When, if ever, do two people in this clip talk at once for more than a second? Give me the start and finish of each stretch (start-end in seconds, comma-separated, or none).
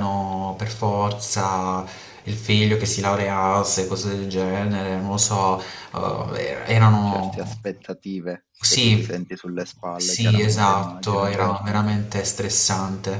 9.9-11.8